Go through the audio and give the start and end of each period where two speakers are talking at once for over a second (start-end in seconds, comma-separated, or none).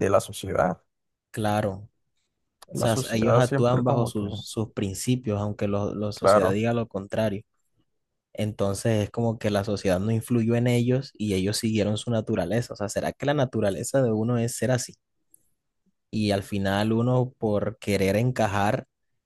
2.7-4.2